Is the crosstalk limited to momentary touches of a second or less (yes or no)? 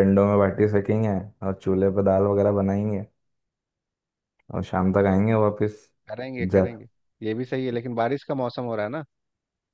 yes